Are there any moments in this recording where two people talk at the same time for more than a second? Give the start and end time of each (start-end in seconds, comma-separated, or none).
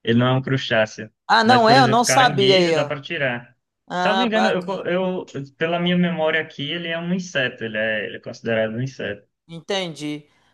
1.3-2.9